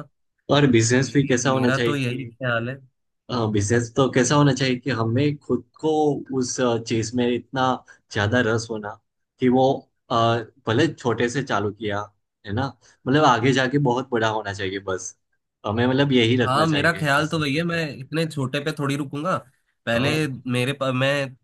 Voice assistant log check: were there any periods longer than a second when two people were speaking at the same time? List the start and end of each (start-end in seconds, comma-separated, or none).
1.0-2.3, 16.4-17.8